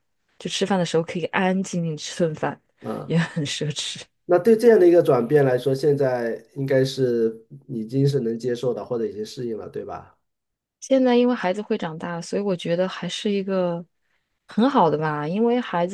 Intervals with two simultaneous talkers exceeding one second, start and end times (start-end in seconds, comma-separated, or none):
none